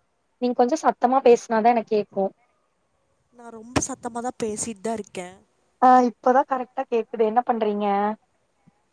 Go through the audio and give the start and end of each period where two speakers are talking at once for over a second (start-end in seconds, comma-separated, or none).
none